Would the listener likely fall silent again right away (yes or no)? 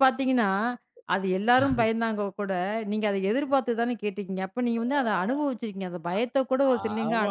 no